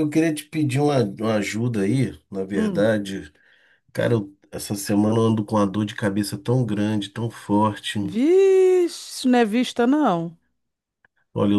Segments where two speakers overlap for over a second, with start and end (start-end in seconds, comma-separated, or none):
none